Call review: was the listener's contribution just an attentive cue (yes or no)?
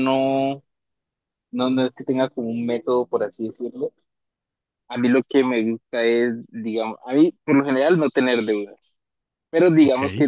yes